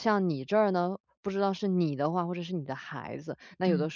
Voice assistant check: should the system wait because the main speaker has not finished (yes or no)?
yes